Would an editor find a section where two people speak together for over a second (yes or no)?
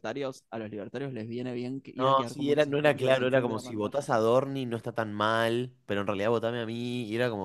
yes